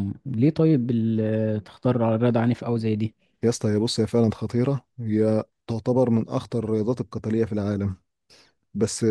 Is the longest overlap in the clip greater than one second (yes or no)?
no